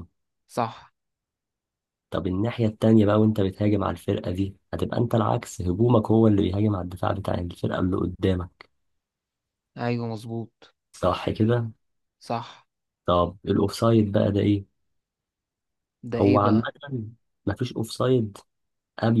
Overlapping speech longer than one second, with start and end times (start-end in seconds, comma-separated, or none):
none